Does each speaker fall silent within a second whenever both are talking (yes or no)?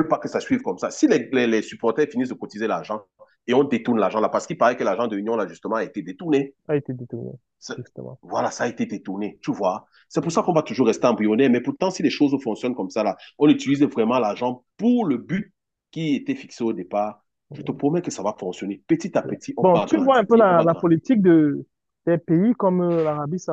no